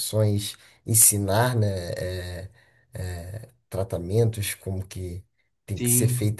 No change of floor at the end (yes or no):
yes